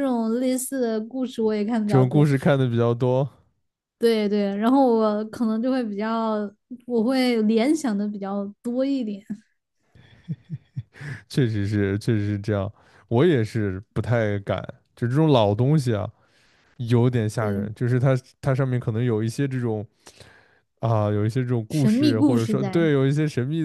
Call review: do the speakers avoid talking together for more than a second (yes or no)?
no